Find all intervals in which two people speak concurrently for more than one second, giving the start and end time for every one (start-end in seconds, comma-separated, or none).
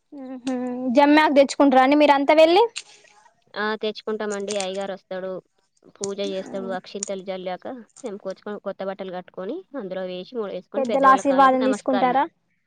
10.8-12.1